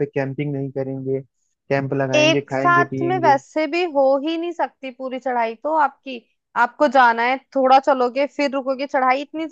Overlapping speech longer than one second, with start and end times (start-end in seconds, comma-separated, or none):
2.1-3.4